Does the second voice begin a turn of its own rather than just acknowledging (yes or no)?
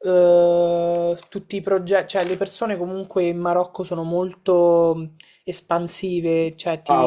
yes